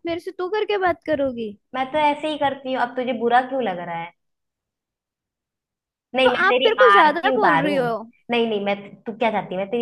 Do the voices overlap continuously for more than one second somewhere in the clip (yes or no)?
yes